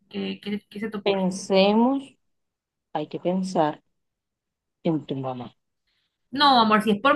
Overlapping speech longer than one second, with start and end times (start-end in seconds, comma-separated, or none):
none